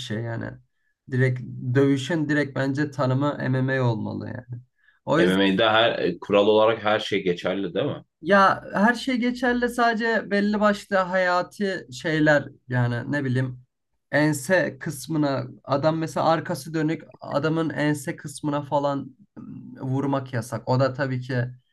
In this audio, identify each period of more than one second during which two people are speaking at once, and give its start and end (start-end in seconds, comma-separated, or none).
none